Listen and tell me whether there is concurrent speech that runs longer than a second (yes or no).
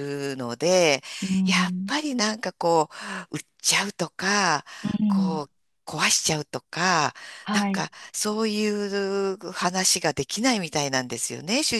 no